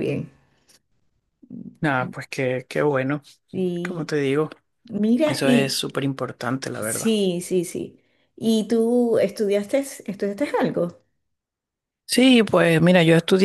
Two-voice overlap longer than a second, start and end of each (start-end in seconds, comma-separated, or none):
none